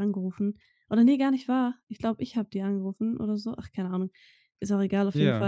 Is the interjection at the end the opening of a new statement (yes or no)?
no